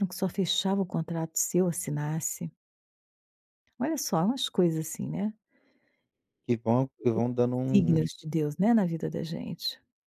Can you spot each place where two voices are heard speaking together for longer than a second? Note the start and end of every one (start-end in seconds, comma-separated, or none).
none